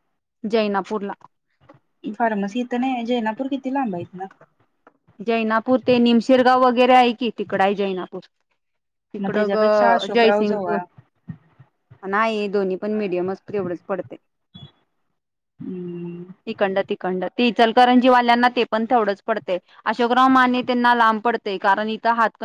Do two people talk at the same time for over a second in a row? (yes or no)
yes